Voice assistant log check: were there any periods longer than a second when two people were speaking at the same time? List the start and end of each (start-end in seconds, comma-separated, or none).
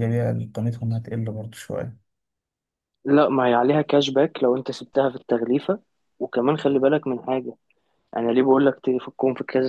none